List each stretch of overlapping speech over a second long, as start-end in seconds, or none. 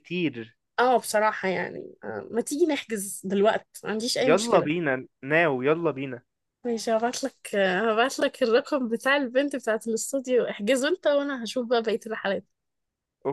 none